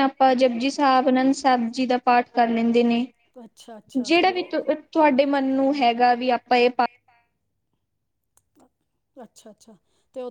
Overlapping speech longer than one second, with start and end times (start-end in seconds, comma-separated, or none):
none